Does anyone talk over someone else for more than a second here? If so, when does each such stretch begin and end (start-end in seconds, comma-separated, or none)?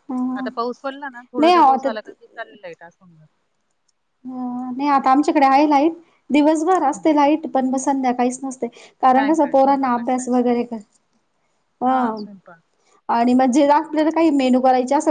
9.2-10.5